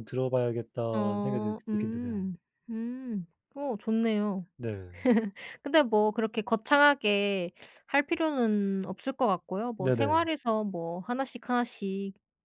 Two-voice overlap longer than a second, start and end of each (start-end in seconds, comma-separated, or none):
0.9-2.3